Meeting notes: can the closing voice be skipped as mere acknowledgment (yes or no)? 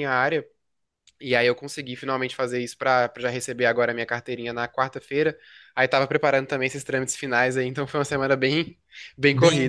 no